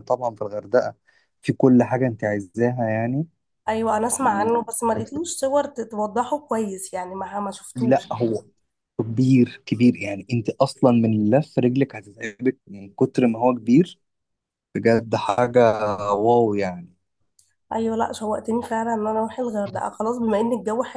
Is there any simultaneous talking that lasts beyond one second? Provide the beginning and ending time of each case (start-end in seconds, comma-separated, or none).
none